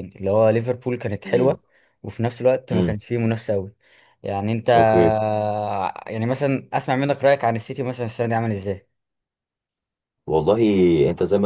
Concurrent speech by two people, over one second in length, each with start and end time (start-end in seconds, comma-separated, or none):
none